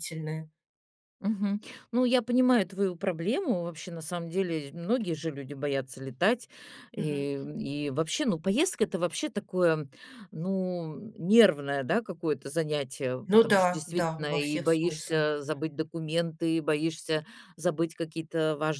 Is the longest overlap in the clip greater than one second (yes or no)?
yes